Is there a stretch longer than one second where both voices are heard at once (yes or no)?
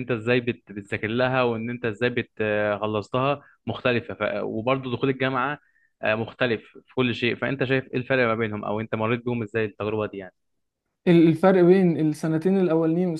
no